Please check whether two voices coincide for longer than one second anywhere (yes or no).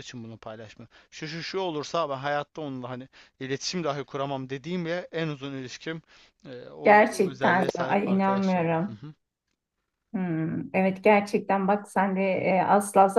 yes